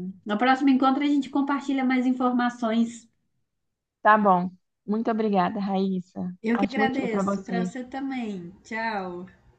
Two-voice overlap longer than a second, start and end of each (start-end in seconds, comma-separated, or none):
6.4-7.7